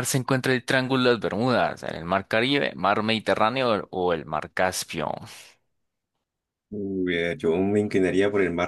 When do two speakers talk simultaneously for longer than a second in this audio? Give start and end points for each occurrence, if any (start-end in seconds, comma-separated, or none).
none